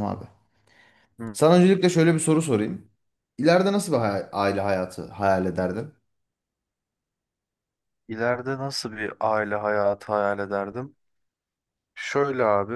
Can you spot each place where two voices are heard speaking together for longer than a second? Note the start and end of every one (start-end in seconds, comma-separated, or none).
none